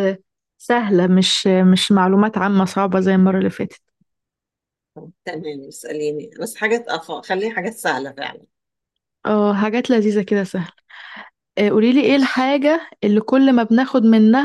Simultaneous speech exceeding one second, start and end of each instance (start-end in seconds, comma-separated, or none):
none